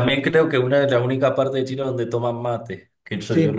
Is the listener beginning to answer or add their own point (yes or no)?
yes